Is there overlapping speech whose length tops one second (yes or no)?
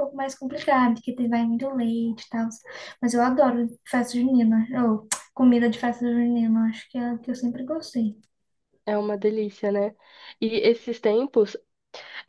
no